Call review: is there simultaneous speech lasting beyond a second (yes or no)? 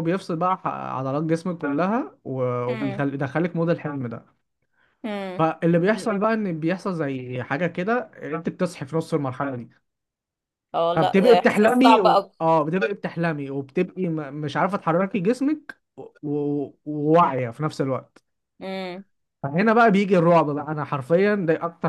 yes